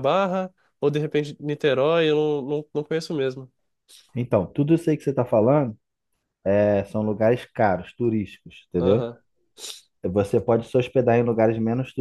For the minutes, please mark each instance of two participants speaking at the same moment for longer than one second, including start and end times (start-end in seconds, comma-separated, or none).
none